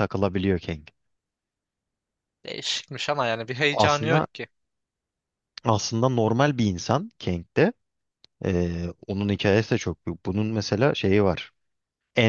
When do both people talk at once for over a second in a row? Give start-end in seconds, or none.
none